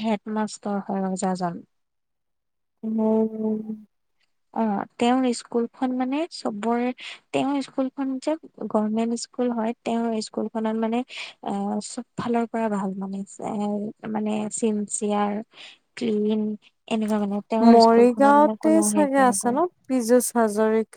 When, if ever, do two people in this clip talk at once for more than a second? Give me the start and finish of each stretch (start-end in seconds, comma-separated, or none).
17.7-19.6